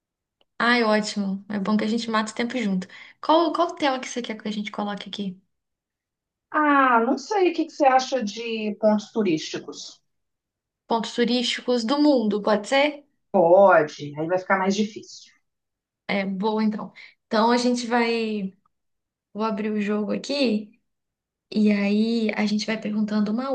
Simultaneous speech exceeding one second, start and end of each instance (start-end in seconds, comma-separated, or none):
none